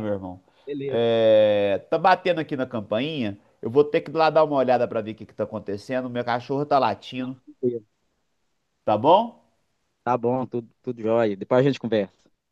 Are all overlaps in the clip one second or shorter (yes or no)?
yes